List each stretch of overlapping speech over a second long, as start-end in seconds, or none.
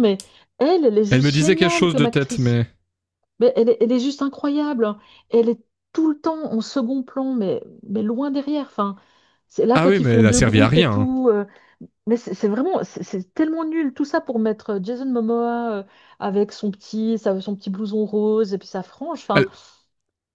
1.1-2.6, 9.7-11.1